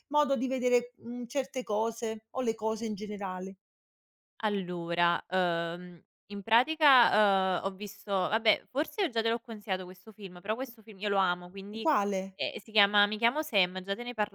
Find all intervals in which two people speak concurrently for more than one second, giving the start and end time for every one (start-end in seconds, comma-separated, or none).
none